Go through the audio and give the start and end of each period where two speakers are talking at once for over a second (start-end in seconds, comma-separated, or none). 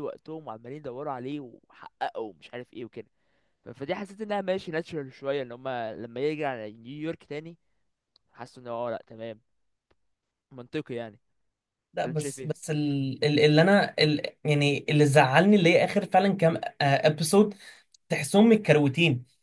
none